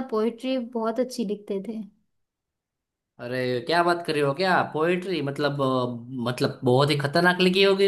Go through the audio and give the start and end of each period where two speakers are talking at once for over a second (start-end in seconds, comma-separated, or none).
none